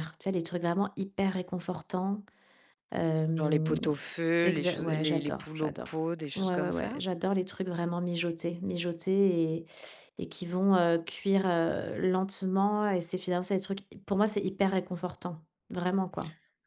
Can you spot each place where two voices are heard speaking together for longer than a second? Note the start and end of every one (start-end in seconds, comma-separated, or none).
4.4-7.0